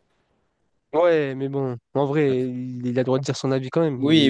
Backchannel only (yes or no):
no